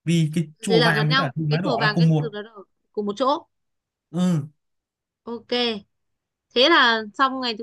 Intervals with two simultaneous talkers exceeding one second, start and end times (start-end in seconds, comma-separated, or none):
0.7-2.3